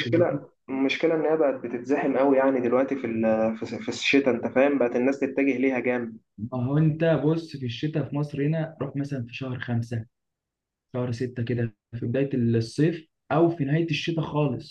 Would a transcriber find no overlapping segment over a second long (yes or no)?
yes